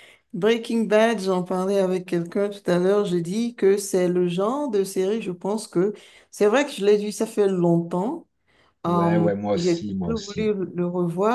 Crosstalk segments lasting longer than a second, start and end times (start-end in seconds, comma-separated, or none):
8.8-10.5